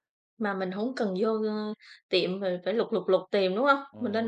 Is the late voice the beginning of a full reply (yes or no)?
yes